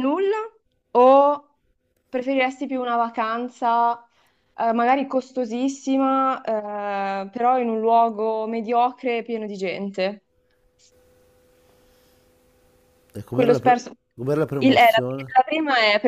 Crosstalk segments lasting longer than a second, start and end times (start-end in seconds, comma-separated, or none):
none